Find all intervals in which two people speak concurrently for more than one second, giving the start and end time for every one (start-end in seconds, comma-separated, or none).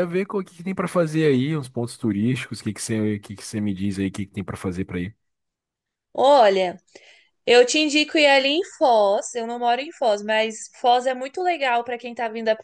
none